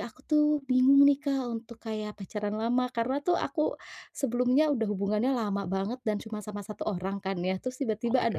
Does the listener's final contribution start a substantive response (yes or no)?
no